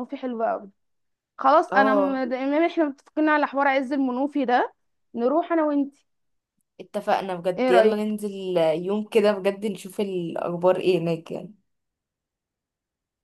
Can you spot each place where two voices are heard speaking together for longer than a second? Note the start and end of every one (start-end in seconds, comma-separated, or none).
none